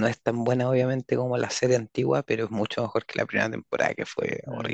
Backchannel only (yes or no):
no